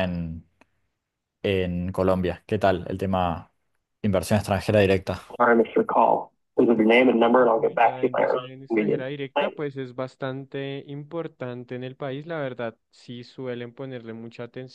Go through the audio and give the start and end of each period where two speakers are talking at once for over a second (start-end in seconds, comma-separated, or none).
7.6-9.6